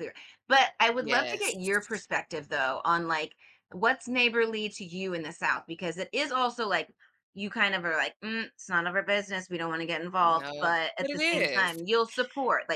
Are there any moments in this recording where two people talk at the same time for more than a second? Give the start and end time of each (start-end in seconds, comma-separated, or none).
10.2-11.7